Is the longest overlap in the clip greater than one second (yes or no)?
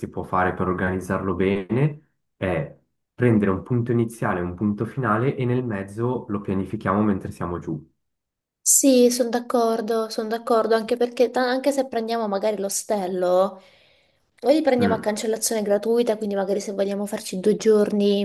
no